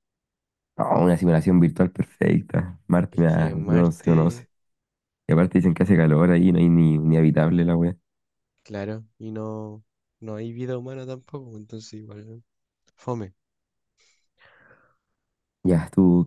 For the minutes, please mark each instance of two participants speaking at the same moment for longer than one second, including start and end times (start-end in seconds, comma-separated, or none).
3.1-4.4